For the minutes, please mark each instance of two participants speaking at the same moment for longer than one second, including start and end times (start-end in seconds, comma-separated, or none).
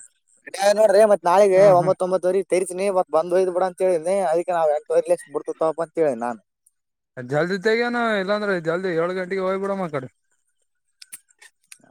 none